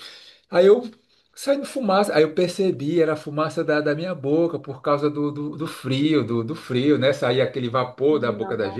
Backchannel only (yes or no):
yes